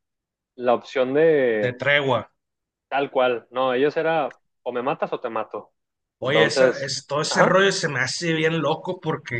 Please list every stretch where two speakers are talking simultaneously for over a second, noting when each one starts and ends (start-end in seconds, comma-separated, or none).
6.2-7.6